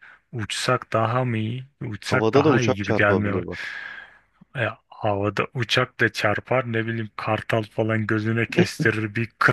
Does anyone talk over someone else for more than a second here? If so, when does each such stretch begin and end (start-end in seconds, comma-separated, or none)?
2.0-3.3